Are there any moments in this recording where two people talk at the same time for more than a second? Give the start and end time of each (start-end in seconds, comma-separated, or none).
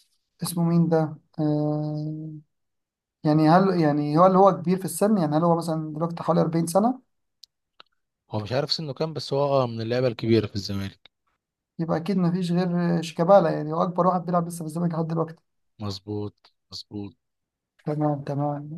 none